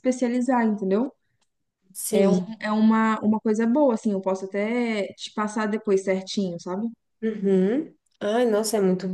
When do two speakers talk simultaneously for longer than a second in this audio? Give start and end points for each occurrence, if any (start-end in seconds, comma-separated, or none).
none